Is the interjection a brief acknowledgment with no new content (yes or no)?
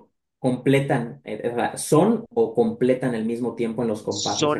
no